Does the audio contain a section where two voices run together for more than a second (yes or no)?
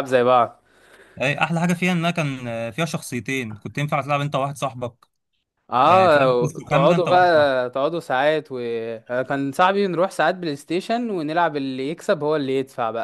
yes